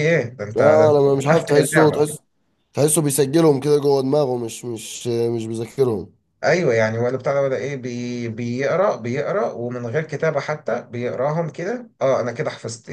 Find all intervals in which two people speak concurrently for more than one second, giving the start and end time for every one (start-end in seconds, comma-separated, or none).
0.6-2.2